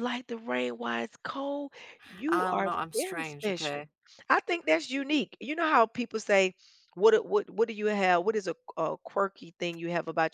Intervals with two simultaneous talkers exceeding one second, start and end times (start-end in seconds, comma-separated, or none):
2.3-3.8